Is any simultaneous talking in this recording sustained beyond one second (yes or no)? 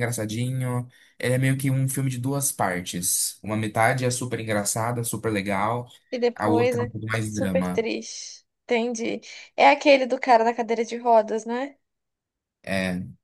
yes